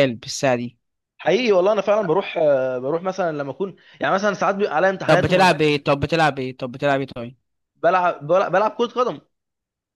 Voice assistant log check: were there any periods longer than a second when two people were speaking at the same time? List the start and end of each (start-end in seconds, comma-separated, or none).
none